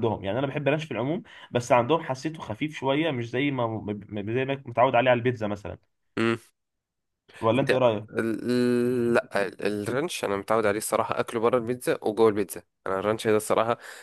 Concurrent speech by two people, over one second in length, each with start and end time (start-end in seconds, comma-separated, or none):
none